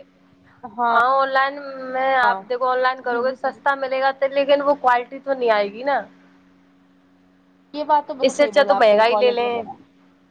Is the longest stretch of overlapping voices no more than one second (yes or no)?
no